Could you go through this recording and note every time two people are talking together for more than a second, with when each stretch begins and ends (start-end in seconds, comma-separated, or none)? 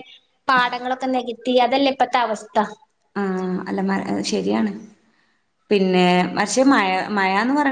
none